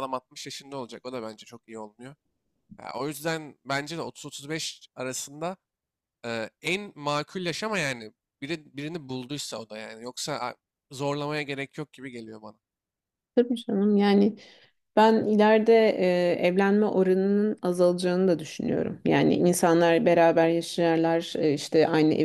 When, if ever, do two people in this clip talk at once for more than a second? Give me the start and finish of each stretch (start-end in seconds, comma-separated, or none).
none